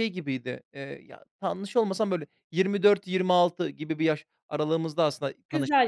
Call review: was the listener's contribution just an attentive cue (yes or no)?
yes